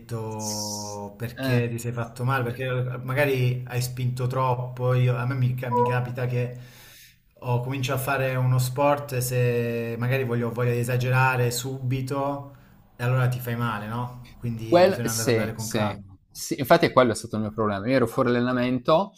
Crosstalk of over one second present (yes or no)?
yes